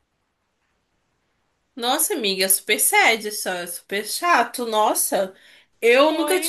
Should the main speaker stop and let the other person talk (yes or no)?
no